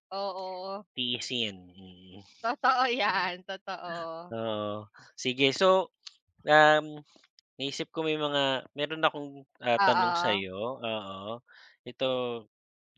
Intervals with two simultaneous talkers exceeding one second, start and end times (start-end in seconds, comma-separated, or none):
none